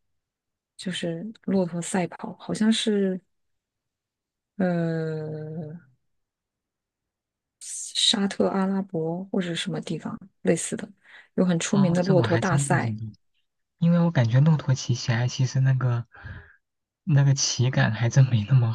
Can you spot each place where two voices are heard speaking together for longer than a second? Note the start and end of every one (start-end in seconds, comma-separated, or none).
11.7-13.0